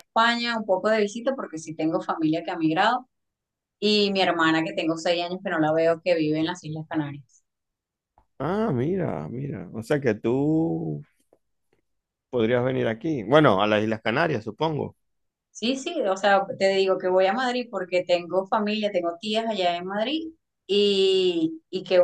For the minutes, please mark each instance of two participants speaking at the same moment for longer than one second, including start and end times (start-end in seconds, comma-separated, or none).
none